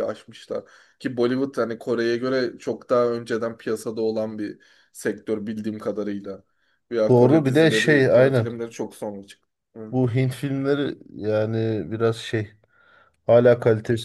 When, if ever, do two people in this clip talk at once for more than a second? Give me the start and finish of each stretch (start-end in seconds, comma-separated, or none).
7.1-8.5